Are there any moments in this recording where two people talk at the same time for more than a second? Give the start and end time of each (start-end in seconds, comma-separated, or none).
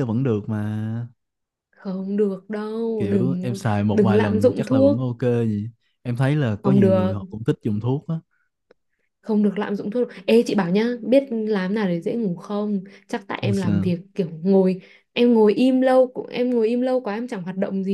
3.0-5.0